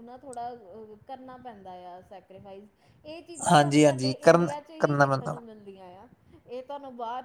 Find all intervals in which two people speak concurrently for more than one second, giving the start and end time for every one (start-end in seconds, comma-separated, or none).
3.5-5.3